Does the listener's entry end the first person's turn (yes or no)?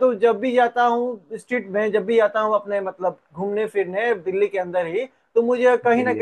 no